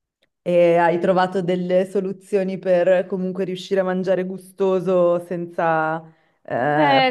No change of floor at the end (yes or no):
yes